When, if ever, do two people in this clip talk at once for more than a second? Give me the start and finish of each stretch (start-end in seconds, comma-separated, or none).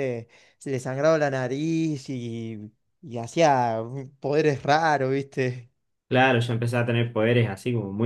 none